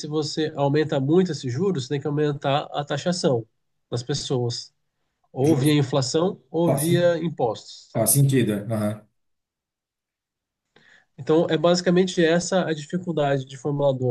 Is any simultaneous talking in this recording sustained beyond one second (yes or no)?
no